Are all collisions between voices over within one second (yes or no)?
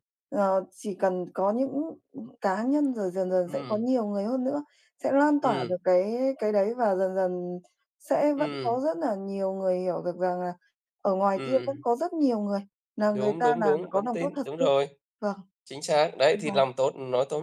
no